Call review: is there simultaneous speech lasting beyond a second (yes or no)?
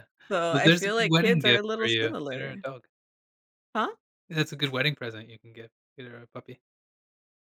yes